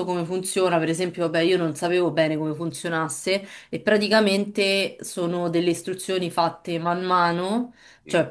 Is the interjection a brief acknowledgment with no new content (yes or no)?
yes